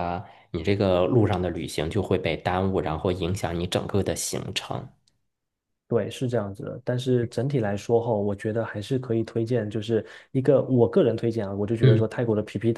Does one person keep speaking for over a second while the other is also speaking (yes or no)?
no